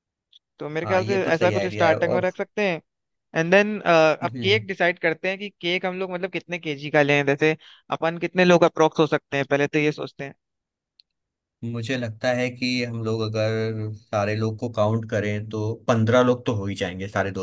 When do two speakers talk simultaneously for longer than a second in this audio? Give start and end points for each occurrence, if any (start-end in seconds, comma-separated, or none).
0.8-2.2